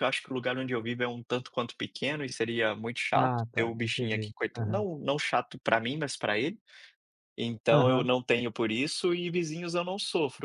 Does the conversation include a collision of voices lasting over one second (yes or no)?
yes